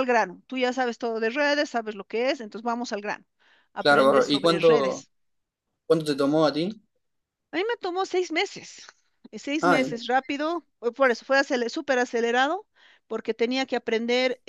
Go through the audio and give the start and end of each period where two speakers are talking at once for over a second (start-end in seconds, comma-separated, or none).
3.8-5.0